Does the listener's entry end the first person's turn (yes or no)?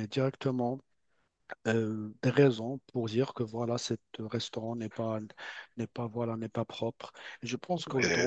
no